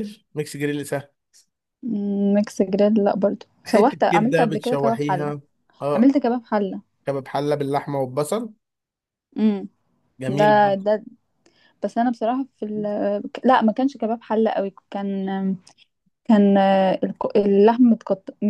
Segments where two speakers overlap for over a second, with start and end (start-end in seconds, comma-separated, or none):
3.6-5.3